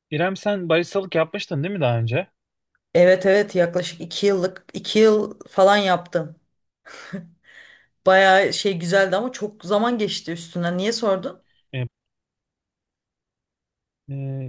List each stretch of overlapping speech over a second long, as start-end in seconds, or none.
none